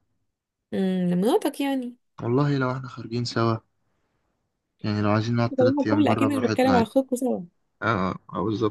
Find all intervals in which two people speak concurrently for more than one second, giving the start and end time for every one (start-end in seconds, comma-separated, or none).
5.6-6.9